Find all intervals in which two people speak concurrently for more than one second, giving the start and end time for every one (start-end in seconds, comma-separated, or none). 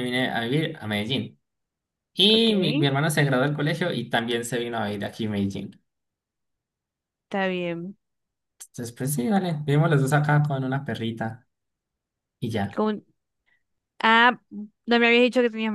none